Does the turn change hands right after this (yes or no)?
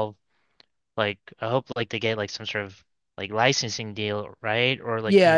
yes